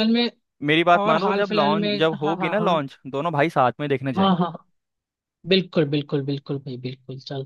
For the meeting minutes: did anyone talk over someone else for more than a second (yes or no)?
yes